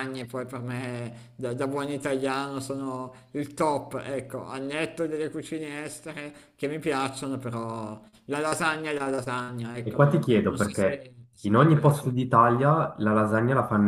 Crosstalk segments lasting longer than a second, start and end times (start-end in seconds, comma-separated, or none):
9.8-12.2